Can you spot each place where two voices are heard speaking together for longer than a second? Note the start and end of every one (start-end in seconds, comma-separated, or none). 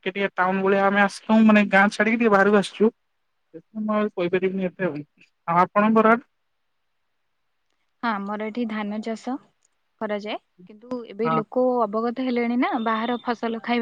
none